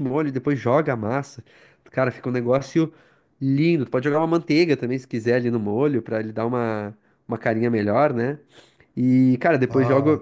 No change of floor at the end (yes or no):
yes